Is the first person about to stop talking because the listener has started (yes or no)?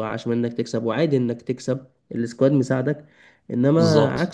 no